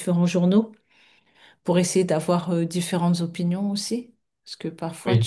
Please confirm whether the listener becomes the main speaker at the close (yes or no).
no